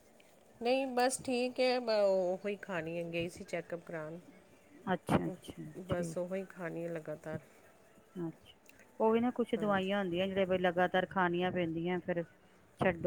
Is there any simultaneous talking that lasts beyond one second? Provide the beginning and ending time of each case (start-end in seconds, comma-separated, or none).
none